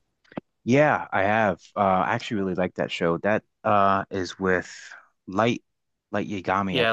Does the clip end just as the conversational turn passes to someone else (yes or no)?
yes